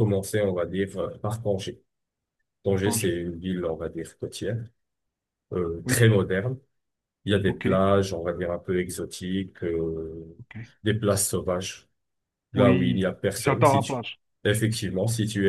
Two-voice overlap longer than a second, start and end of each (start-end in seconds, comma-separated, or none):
12.6-14.0